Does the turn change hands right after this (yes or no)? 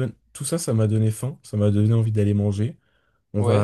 no